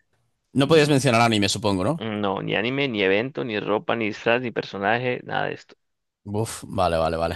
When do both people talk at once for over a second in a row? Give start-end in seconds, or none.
none